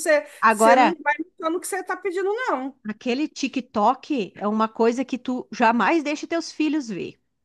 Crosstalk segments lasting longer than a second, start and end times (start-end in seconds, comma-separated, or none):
none